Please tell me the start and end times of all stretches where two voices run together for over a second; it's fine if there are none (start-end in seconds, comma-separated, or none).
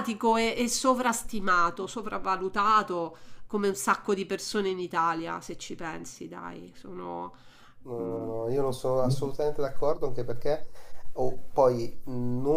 none